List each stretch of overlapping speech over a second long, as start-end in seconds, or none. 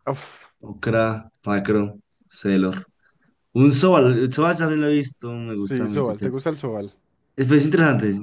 none